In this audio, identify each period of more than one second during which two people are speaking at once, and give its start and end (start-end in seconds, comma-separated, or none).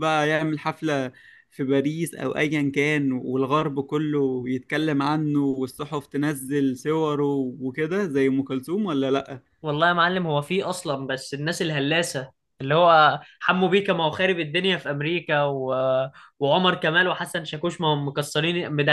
none